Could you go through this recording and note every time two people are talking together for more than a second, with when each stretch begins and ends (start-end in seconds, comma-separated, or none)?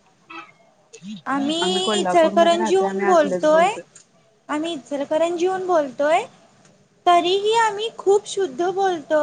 1.8-3.4